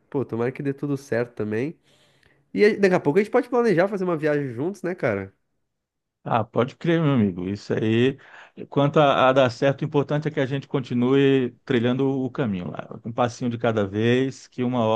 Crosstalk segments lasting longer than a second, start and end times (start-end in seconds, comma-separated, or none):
none